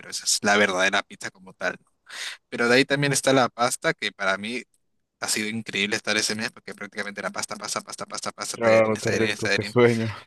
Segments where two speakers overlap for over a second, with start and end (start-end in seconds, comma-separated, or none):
8.5-9.8